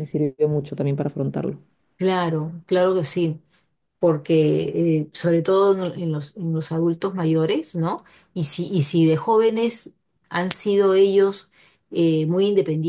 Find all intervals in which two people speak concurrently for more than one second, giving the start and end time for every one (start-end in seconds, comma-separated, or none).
none